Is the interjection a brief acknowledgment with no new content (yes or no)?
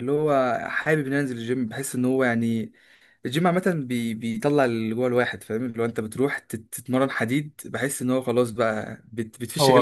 no